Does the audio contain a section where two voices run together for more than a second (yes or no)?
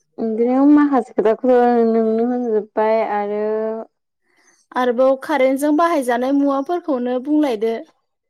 no